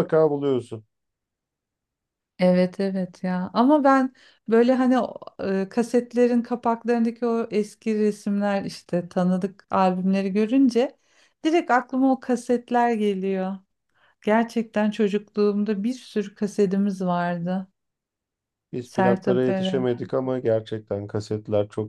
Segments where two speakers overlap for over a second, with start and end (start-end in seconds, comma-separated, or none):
18.8-20.1